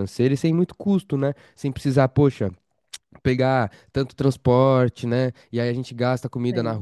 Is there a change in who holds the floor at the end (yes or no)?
no